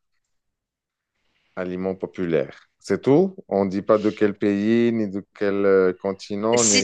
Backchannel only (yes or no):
no